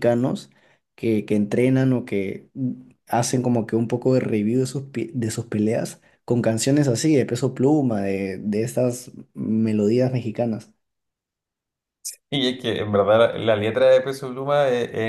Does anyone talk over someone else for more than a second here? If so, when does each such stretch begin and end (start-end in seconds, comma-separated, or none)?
none